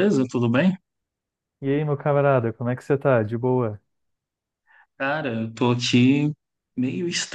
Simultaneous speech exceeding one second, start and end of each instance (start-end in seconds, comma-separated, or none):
none